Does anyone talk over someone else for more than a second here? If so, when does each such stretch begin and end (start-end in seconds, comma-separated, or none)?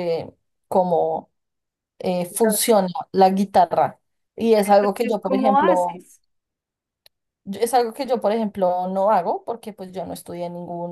4.7-6.0